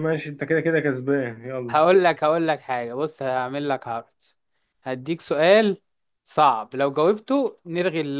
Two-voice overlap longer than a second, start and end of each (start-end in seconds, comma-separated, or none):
none